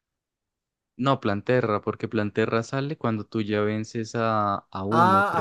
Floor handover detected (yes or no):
yes